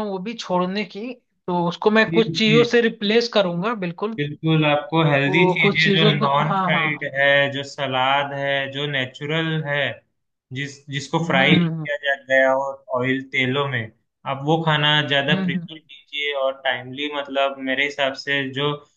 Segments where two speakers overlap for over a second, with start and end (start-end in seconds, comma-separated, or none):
5.3-7.2